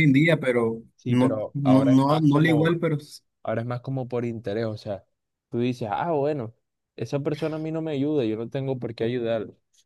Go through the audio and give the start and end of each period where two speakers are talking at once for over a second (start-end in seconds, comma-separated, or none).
0.9-2.8